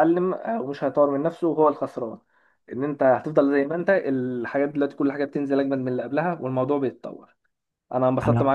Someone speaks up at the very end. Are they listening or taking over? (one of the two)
listening